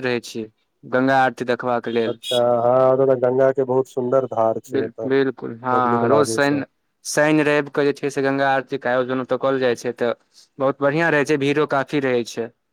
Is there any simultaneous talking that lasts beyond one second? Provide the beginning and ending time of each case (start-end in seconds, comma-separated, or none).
none